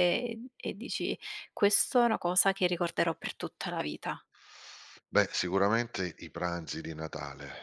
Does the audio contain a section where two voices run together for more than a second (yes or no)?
no